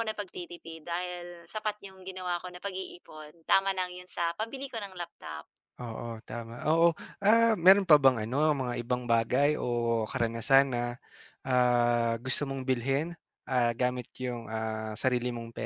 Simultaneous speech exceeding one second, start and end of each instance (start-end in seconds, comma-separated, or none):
none